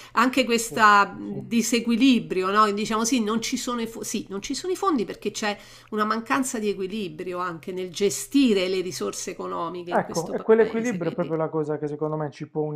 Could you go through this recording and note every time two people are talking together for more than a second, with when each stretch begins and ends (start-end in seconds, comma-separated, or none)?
9.9-11.3